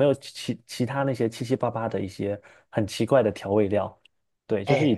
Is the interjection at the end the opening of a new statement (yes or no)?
yes